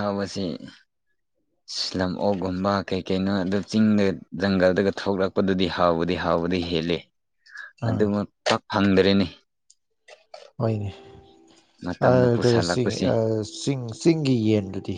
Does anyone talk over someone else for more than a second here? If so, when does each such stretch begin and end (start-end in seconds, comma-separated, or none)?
none